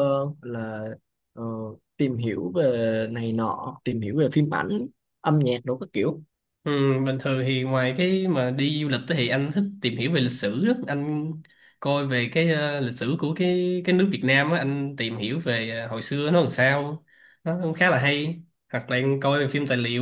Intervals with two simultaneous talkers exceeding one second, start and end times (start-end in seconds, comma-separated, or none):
none